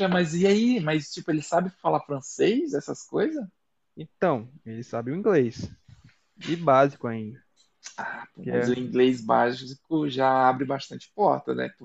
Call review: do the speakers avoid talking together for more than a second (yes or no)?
yes